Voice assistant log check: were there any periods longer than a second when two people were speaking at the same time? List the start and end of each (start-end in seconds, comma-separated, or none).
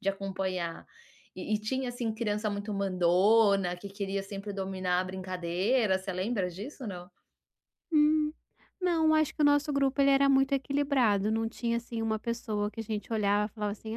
none